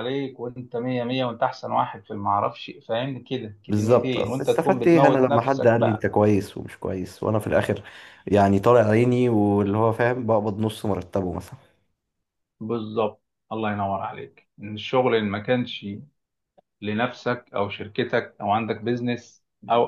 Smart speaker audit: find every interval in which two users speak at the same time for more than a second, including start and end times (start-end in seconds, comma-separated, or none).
3.7-6.0